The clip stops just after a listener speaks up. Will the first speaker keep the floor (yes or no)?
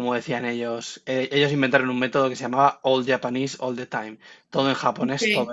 yes